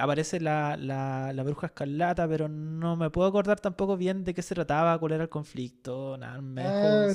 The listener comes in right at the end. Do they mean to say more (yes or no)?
yes